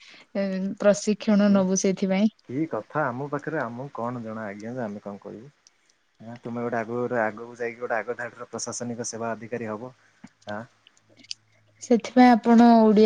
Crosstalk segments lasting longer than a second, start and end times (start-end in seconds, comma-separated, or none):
none